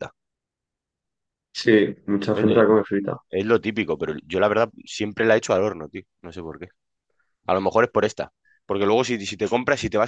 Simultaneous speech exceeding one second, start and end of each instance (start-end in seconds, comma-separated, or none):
none